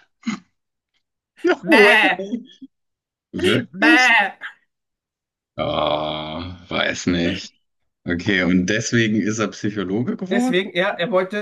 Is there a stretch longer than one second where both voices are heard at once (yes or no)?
no